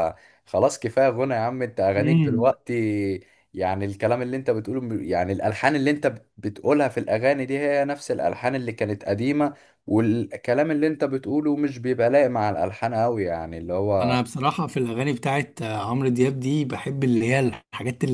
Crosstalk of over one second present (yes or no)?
no